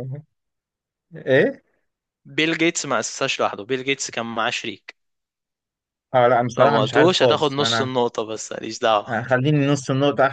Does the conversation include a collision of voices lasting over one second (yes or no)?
yes